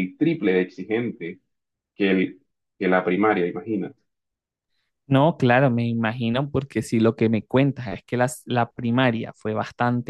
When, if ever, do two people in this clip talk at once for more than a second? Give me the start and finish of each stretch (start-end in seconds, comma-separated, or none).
none